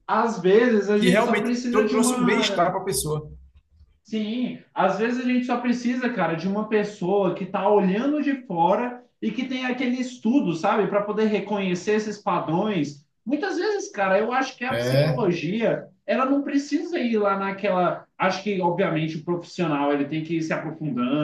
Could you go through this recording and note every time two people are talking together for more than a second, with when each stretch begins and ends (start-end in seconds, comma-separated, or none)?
1.0-2.8